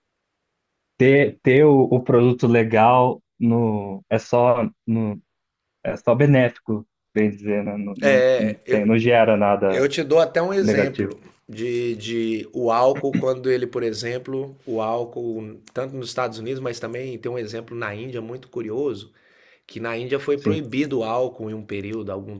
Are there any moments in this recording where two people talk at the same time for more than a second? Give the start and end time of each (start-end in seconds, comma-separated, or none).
none